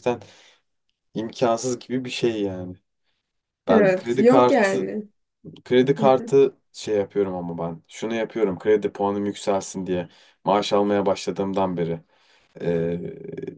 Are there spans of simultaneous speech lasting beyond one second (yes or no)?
yes